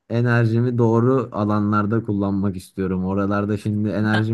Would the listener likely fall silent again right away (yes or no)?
yes